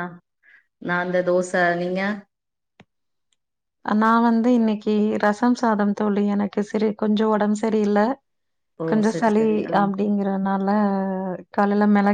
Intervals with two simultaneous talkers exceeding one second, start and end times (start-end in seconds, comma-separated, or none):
none